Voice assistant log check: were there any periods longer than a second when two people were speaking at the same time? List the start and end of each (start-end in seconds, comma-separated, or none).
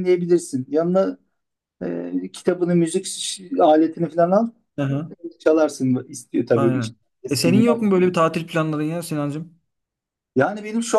6.5-8.0